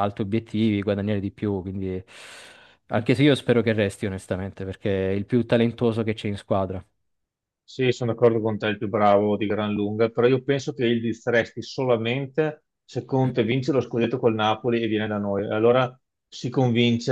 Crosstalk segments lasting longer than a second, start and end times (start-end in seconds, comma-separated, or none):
none